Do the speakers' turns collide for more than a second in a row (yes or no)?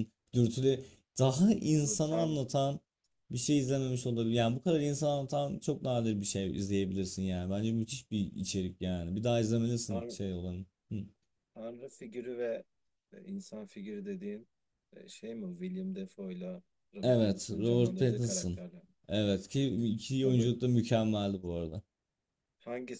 yes